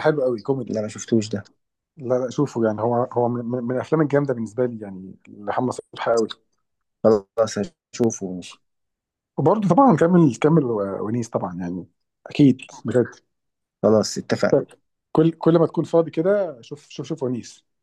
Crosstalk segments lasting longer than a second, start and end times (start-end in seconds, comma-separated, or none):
none